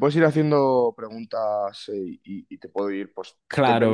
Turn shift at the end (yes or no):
yes